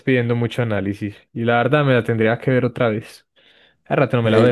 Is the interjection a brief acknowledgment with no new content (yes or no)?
no